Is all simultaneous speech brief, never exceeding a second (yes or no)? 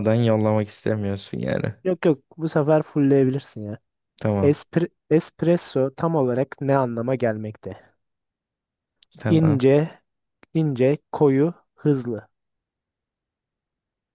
yes